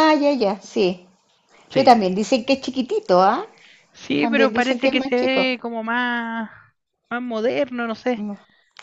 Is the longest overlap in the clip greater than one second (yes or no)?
yes